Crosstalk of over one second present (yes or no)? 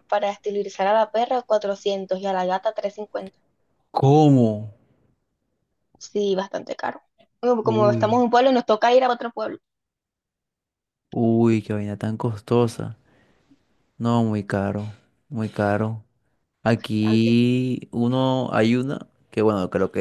no